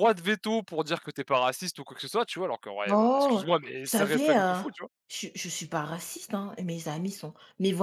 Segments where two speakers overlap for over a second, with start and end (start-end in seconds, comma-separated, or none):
2.9-4.6